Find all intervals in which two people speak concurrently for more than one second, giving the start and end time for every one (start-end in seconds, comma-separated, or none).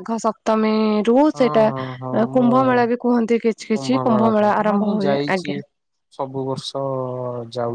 3.7-5.5